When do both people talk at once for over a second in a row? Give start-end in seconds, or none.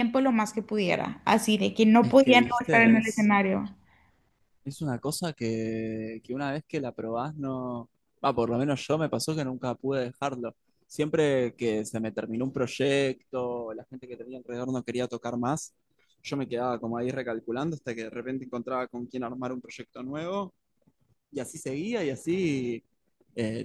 2.0-3.3